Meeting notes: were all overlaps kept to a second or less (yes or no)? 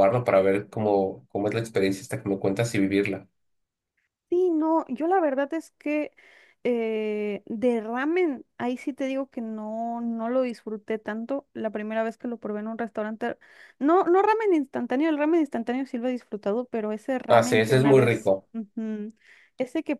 no